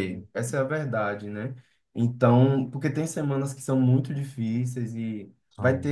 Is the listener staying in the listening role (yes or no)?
yes